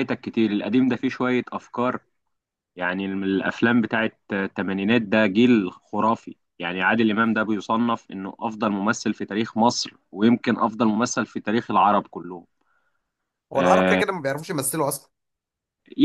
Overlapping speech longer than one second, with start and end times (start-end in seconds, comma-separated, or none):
none